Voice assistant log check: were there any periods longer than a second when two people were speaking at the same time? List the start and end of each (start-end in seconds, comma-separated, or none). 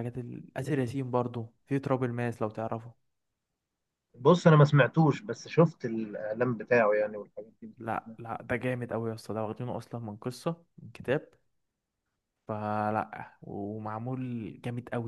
none